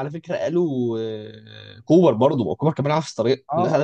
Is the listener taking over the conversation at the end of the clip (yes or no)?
no